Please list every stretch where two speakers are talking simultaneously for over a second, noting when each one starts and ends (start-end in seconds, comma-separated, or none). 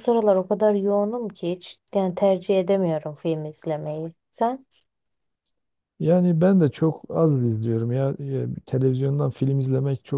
none